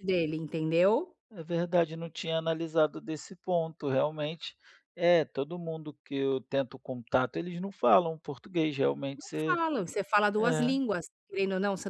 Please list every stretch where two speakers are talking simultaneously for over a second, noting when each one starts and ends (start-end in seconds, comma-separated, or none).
none